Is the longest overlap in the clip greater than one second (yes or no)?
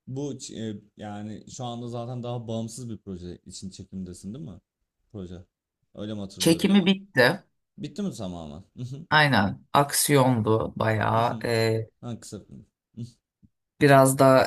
no